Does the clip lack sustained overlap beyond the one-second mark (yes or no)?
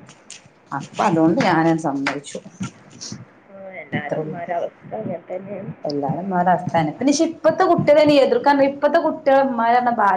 yes